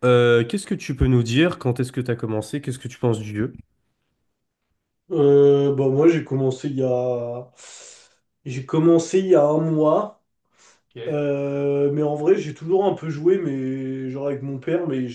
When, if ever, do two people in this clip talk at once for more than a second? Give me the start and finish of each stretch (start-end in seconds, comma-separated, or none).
none